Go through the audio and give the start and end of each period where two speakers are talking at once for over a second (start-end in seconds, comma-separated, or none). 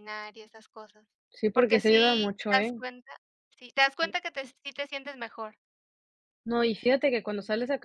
1.5-2.8